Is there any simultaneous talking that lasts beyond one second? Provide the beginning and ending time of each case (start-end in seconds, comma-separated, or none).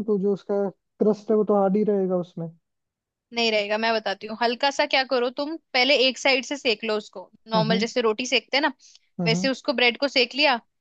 none